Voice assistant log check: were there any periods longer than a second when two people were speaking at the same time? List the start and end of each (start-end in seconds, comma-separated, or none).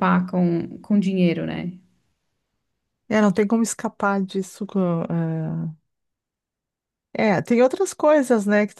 none